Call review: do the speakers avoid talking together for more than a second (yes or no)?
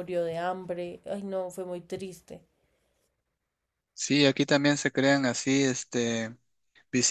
yes